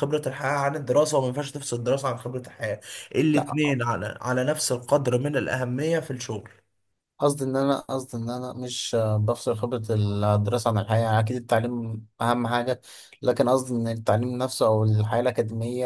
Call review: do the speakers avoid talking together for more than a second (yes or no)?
yes